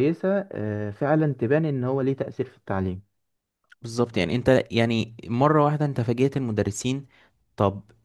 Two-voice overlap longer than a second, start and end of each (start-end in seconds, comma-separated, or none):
none